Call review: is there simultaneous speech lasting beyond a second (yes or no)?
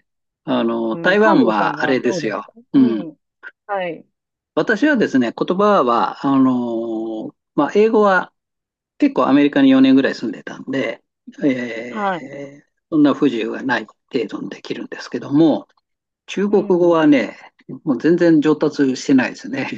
yes